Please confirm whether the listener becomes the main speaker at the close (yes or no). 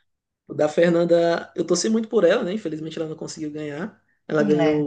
no